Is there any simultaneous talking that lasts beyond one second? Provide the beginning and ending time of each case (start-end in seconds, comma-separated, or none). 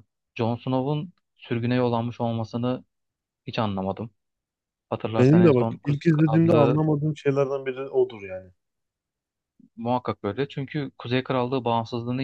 5.2-6.8